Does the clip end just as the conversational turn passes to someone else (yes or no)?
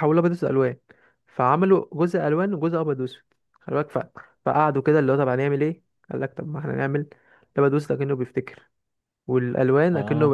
no